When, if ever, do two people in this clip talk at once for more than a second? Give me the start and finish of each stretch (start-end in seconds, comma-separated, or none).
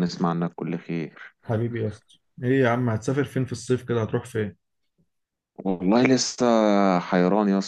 none